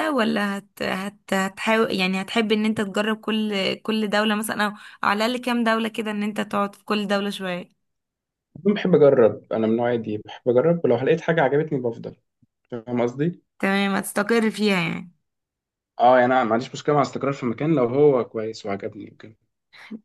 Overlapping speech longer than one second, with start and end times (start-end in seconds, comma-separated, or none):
none